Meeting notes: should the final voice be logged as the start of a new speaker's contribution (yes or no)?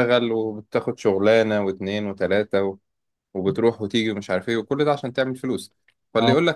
no